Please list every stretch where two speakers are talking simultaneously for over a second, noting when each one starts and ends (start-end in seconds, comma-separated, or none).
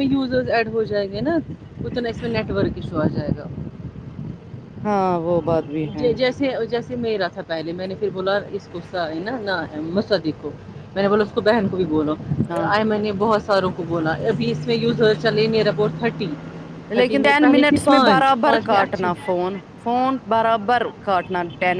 17.0-19.1